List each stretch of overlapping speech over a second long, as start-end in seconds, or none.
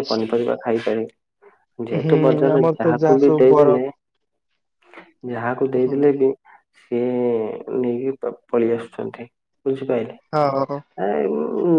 2.0-3.8